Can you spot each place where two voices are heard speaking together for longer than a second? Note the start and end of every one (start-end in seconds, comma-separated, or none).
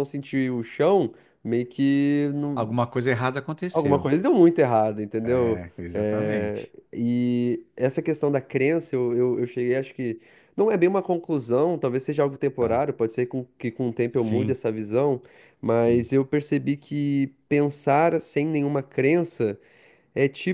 5.2-6.7